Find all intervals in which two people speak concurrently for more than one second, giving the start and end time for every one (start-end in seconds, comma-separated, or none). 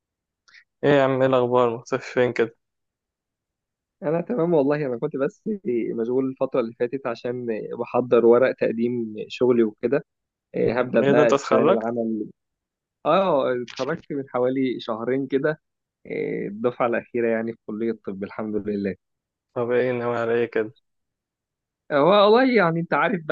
10.7-11.9